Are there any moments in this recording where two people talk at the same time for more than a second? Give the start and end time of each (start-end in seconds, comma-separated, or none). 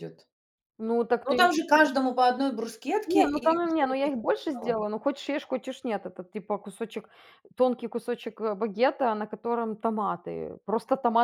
3.1-4.7